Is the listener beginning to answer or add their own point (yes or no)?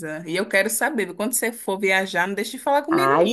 yes